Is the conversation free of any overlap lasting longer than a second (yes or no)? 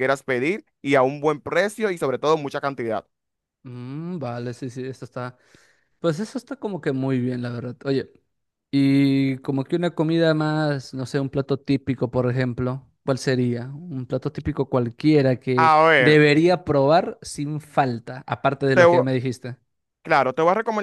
yes